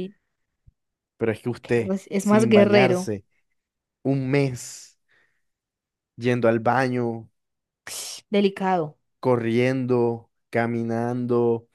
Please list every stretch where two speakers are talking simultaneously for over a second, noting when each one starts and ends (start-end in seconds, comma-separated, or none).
1.6-3.1